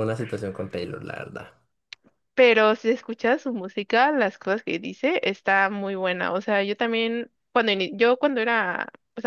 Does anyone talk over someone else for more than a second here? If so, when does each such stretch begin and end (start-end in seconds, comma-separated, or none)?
none